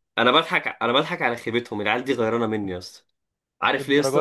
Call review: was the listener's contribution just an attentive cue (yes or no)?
yes